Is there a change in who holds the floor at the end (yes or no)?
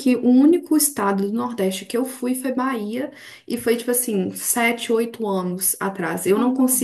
no